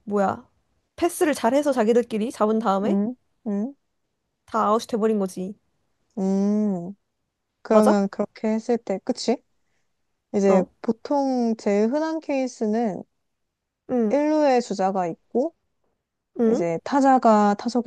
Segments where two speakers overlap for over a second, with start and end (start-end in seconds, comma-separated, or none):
none